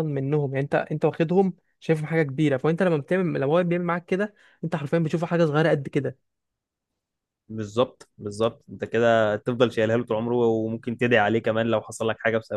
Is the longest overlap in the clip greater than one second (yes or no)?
no